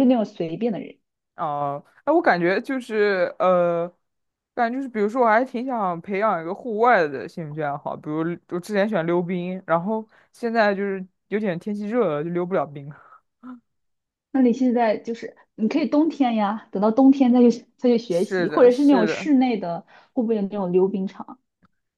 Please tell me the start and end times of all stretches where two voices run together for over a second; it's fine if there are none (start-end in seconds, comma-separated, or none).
18.1-19.3